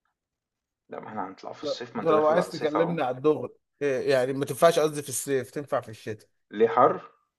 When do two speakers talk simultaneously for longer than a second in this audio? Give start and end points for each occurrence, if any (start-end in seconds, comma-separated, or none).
1.6-3.0